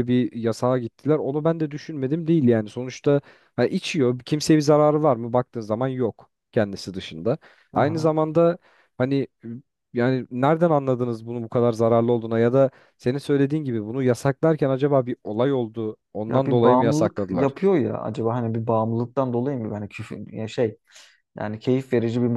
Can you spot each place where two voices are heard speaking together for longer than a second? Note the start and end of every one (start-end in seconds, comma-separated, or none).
16.3-17.5